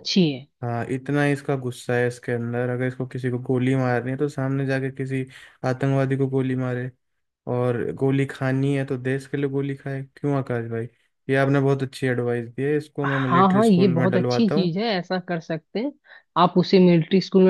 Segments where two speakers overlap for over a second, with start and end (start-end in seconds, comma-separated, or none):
13.0-14.7